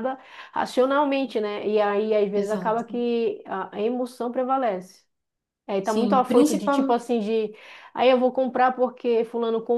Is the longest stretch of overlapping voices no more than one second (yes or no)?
no